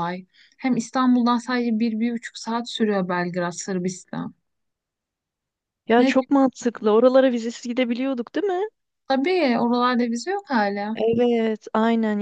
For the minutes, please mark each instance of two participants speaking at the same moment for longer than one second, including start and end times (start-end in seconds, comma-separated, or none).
none